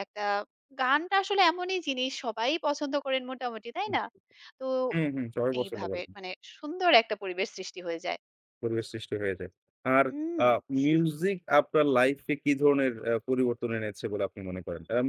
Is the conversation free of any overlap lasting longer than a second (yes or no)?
yes